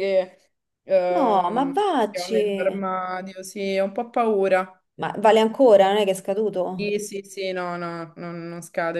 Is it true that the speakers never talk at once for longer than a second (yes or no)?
no